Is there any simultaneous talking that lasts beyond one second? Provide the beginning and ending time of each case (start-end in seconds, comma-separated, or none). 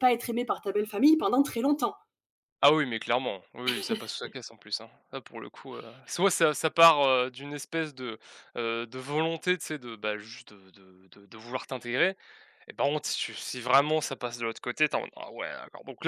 none